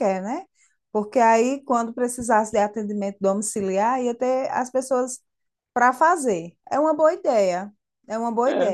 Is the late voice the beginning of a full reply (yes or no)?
no